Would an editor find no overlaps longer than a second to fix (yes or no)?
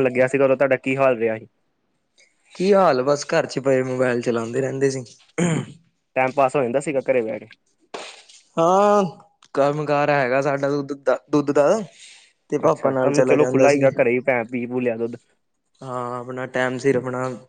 no